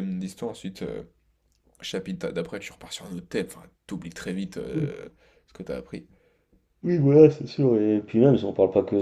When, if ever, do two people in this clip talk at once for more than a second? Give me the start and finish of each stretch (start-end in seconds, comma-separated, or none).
none